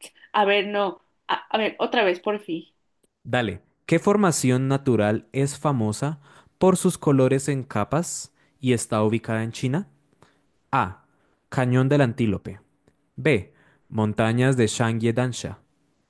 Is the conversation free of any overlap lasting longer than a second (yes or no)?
yes